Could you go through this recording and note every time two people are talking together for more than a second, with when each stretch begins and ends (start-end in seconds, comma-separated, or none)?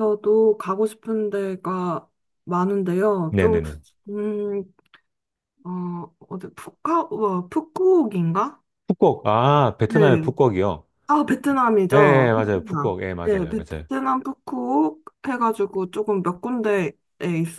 11.9-13.9